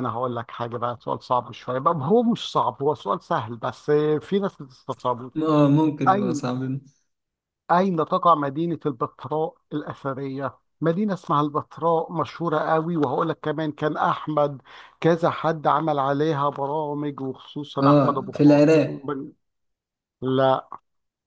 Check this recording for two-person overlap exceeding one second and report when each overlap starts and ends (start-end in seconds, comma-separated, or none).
17.8-19.1